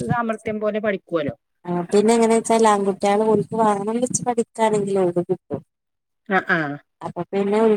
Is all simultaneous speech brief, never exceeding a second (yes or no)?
yes